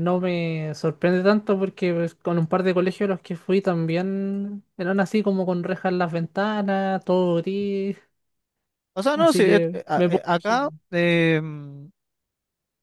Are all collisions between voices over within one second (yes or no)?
no